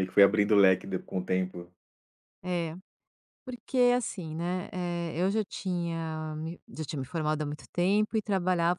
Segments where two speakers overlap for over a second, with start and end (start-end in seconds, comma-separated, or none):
none